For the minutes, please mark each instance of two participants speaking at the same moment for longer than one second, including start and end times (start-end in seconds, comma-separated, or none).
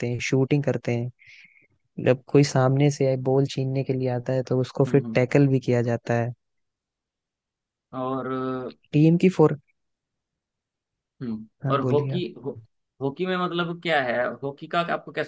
none